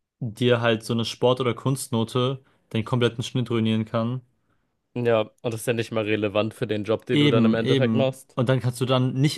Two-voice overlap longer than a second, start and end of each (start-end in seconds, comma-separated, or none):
7.1-8.4